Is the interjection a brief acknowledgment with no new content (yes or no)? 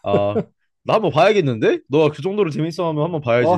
no